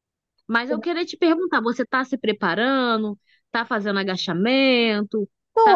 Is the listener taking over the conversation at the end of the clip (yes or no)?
yes